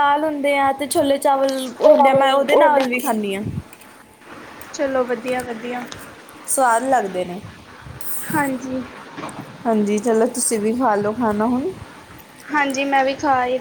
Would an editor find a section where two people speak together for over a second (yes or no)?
yes